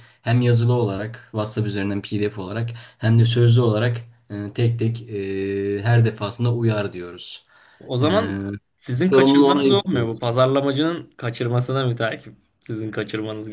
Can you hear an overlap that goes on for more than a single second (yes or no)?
yes